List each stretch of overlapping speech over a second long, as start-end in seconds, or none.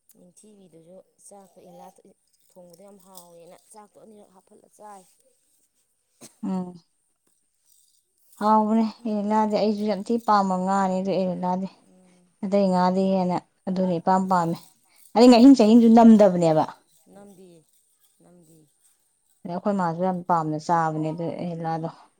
none